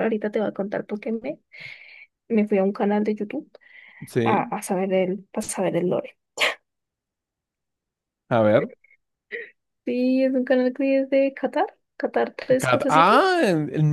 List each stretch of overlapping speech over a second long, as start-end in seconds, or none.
none